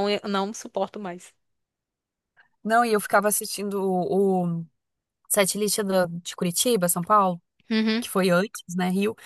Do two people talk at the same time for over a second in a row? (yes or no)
no